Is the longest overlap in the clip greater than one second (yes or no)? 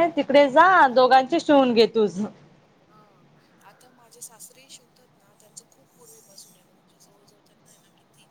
no